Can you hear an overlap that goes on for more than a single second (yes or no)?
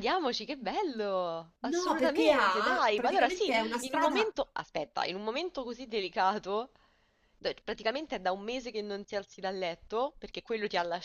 yes